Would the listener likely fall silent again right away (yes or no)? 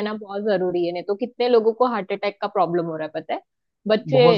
yes